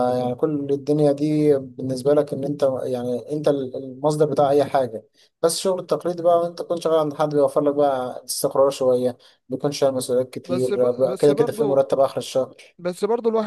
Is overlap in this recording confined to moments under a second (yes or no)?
no